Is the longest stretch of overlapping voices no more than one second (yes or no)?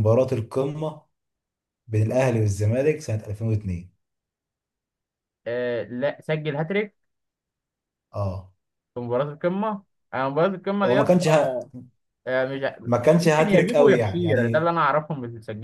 no